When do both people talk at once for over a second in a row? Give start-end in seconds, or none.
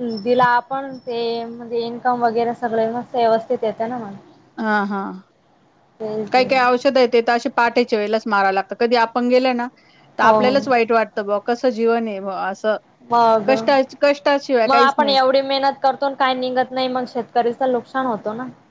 none